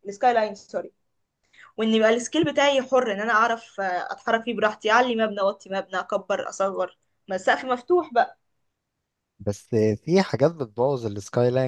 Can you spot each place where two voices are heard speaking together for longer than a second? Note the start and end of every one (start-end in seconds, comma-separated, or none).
none